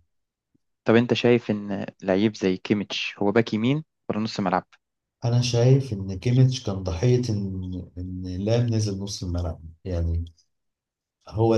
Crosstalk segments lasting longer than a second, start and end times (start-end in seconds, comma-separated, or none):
none